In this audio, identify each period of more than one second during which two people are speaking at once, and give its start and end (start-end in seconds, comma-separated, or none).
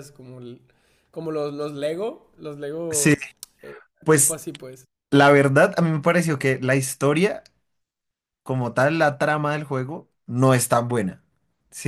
none